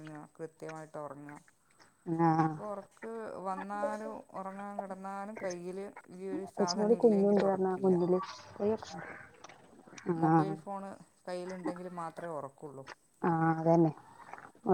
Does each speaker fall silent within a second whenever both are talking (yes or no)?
no